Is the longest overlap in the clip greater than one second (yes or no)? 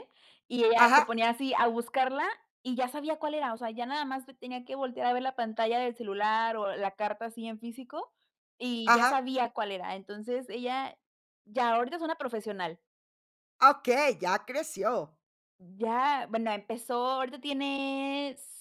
no